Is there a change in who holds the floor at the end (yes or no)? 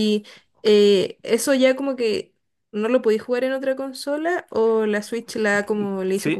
yes